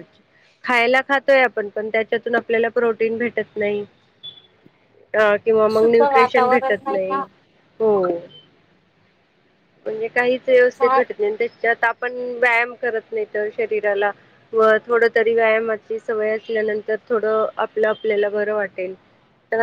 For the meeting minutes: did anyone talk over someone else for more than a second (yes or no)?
yes